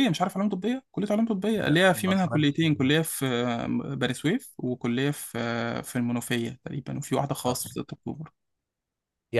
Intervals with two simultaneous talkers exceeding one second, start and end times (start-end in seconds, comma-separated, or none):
1.6-2.9